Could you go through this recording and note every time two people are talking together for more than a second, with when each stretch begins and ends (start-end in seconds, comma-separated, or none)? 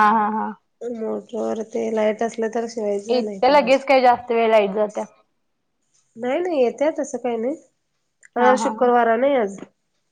none